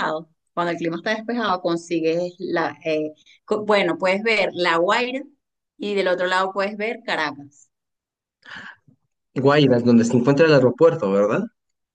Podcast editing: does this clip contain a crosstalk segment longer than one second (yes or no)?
no